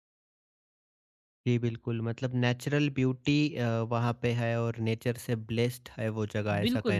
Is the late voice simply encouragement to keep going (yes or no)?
no